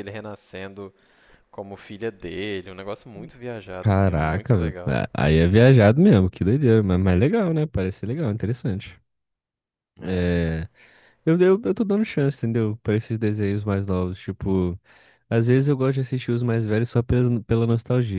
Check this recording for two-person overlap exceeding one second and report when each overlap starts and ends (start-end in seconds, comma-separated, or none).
3.8-5.0